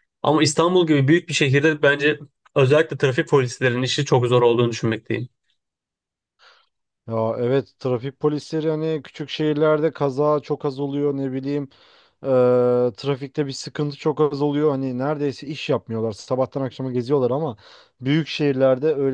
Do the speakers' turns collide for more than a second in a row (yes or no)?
no